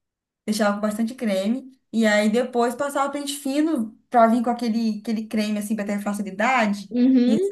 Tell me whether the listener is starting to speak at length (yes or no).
yes